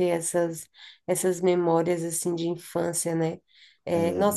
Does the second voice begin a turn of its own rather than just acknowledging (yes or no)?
no